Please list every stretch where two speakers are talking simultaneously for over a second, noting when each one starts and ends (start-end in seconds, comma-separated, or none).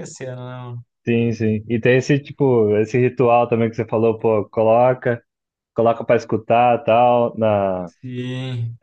none